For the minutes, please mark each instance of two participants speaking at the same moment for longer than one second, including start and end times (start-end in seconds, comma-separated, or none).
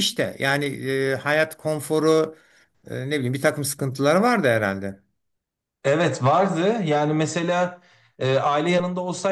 none